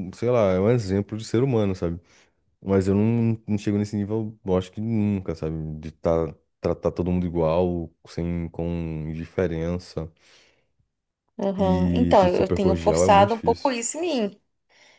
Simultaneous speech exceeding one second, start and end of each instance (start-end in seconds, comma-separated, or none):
11.6-13.8